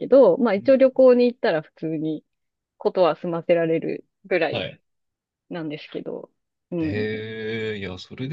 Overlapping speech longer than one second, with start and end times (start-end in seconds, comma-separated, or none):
none